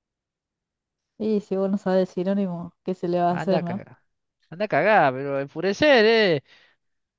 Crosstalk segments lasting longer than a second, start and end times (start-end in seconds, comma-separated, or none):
none